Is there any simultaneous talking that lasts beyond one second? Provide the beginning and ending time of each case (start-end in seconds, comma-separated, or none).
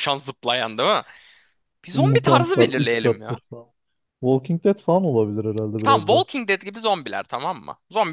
1.9-3.4